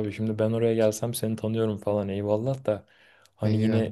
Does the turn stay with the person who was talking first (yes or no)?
yes